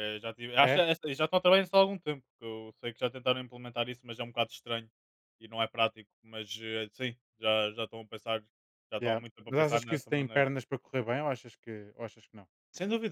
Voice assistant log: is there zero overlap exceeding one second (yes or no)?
no